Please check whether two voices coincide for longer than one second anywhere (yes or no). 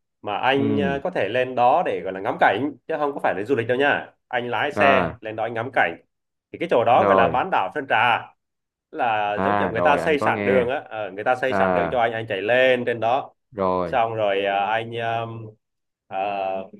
yes